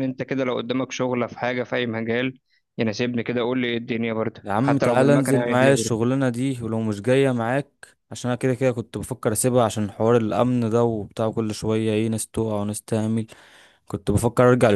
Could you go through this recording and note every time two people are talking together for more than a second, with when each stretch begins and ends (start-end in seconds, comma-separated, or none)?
4.4-5.9